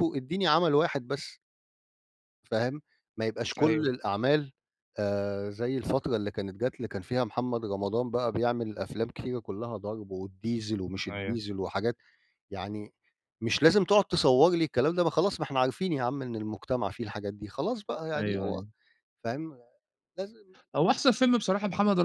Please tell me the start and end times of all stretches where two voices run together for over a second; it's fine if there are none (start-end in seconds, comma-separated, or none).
none